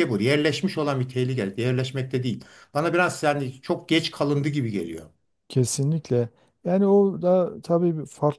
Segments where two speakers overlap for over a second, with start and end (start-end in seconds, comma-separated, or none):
none